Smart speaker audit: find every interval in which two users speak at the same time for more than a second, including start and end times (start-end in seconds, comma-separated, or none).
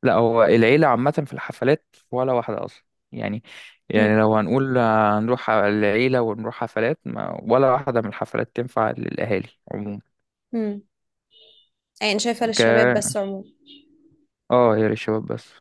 none